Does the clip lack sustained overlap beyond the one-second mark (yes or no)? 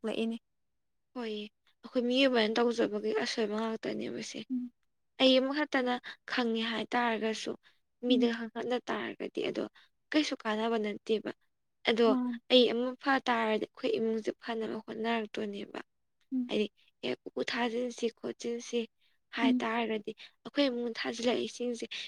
yes